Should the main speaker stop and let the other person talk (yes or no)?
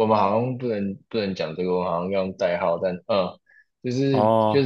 no